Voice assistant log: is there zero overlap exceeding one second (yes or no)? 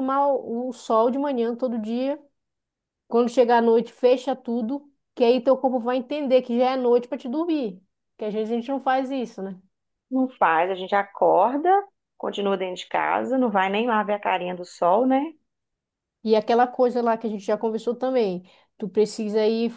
yes